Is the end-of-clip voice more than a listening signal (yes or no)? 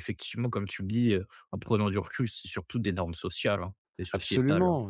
yes